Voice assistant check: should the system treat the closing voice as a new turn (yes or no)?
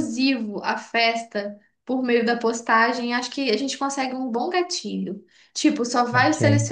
no